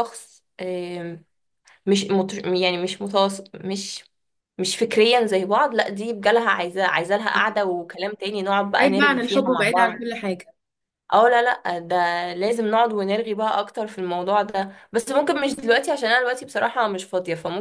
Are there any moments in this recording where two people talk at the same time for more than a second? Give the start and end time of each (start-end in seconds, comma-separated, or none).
8.8-10.1